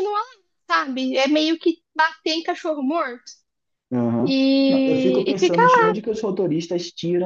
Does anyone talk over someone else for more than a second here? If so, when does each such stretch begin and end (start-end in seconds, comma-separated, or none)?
4.2-5.9